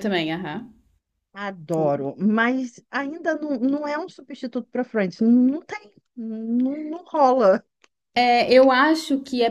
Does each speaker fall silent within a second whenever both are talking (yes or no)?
yes